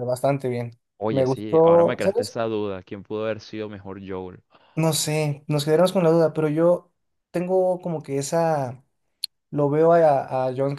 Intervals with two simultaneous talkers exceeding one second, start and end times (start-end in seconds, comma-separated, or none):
1.0-2.4